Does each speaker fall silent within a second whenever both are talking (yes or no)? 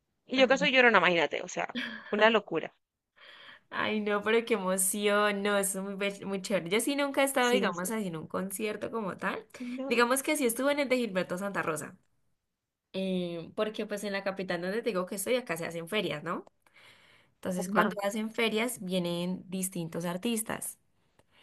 yes